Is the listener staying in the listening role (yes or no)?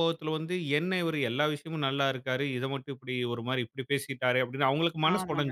no